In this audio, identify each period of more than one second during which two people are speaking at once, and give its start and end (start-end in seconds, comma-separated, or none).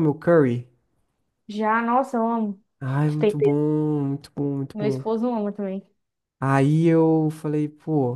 none